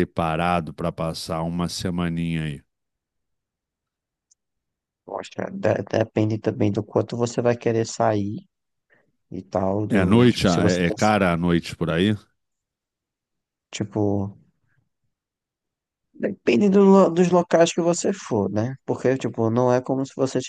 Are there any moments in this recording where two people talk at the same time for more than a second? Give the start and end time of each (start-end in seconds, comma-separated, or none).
9.9-11.1